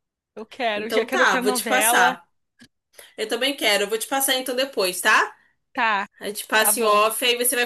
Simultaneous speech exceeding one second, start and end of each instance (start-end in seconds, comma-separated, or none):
0.8-2.2